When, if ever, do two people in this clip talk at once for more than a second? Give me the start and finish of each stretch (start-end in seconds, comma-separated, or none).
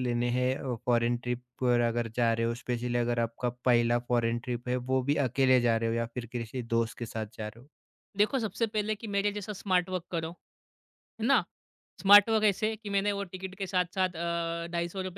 none